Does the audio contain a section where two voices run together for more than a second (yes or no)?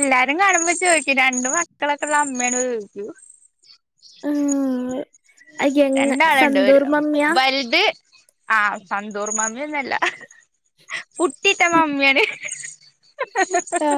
no